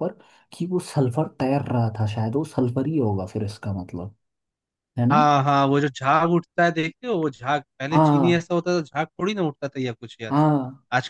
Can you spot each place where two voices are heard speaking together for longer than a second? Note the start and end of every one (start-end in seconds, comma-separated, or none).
none